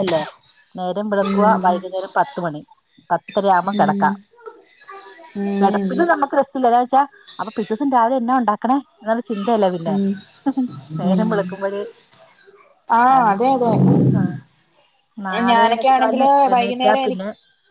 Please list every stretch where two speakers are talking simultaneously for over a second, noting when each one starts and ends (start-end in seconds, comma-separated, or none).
15.5-17.2